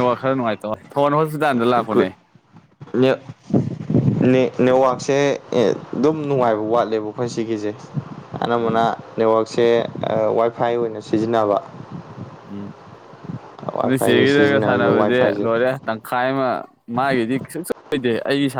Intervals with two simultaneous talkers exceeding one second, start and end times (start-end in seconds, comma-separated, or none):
13.8-15.5